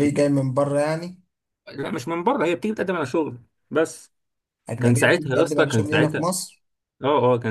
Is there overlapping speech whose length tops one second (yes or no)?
yes